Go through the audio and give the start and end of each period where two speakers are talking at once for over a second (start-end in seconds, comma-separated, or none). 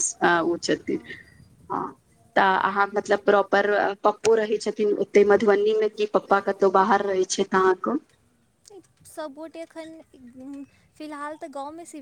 none